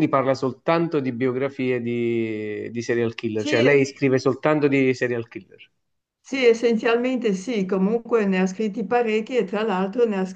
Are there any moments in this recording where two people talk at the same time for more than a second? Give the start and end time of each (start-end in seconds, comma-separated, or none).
none